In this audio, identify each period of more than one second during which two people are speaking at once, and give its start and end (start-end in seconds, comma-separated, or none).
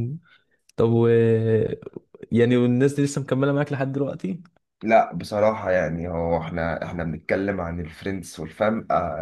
none